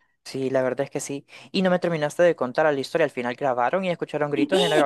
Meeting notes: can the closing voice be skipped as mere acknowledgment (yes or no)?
no